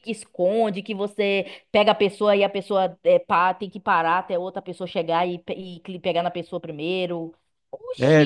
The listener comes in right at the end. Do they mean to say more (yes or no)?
yes